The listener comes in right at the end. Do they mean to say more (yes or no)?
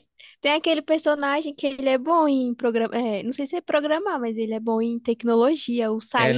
yes